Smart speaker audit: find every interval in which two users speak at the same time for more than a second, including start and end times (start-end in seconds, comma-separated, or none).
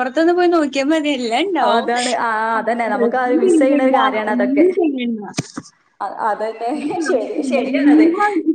2.6-4.7